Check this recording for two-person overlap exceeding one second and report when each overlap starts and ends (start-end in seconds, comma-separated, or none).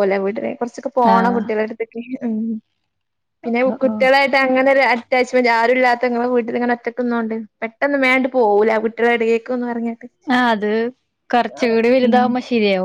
none